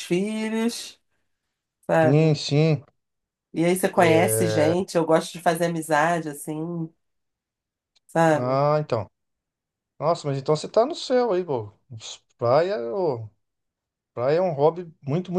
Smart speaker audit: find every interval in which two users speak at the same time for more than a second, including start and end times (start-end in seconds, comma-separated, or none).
none